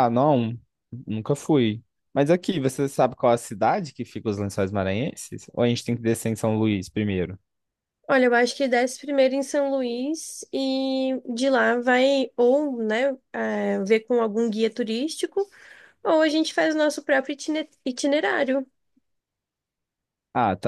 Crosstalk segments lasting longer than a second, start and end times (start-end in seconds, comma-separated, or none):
none